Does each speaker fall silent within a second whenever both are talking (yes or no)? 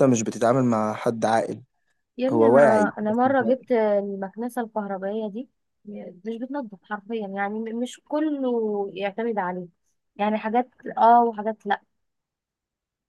no